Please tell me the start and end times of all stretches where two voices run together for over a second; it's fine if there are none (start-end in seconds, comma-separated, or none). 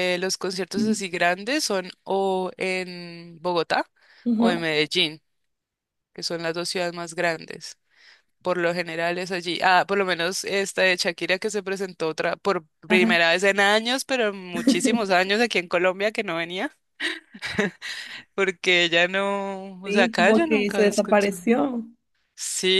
19.8-21.5